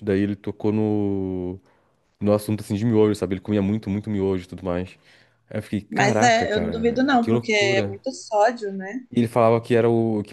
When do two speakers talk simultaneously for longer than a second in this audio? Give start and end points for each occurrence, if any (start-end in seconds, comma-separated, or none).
5.9-7.9